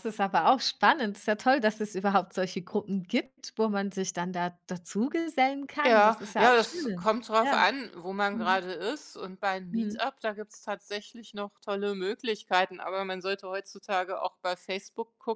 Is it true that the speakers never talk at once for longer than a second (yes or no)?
no